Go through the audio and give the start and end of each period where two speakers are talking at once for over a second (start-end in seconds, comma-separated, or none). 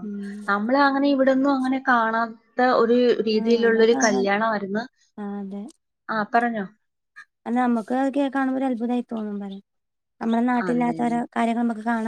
none